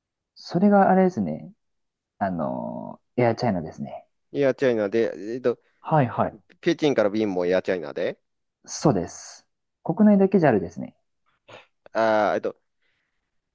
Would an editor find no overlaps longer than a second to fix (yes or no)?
yes